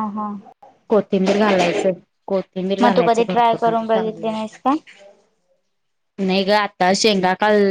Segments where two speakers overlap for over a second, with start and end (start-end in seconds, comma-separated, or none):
2.8-4.3